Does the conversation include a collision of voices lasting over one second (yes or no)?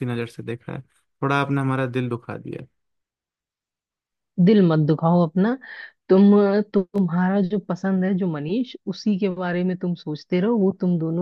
no